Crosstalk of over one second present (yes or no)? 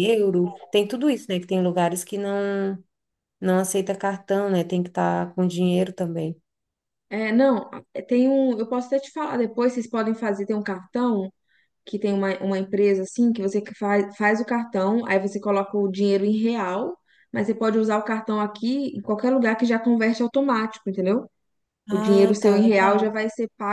yes